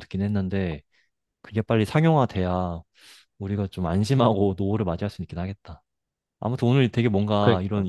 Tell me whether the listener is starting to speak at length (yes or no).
no